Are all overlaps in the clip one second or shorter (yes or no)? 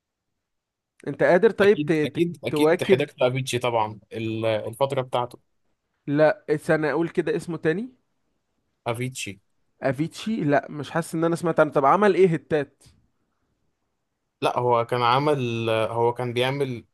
no